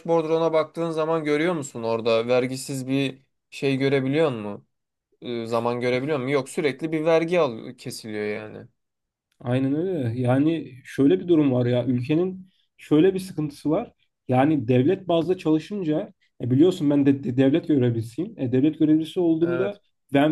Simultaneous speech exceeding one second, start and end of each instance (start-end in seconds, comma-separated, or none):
none